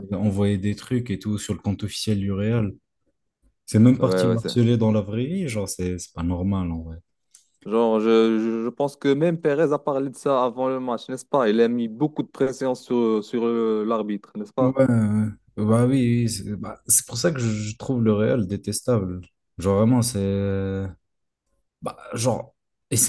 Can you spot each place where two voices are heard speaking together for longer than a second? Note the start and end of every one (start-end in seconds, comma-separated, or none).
none